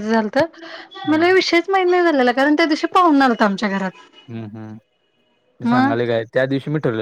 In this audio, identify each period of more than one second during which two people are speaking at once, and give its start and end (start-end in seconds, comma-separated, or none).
none